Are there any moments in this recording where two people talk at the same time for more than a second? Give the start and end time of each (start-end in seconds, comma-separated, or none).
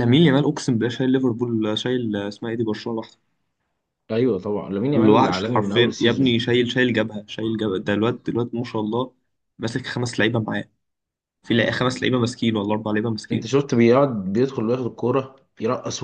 4.9-6.4